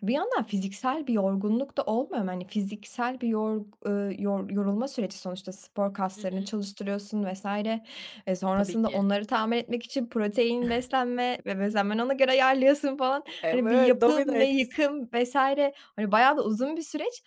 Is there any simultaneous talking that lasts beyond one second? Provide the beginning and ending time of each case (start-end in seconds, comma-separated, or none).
13.4-14.8